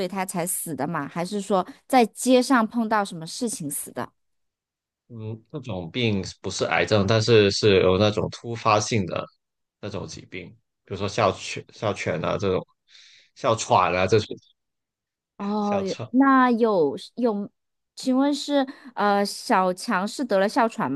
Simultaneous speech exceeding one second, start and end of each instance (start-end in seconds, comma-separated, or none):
none